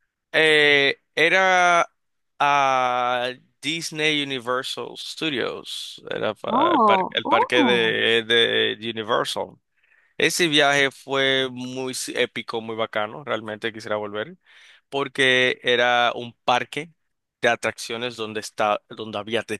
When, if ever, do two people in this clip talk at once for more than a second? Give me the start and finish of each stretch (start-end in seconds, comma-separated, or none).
6.5-8.0